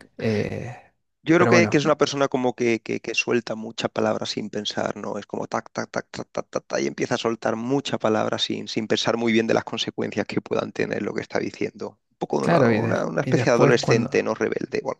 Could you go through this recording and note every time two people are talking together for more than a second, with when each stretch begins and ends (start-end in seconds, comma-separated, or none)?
12.4-14.3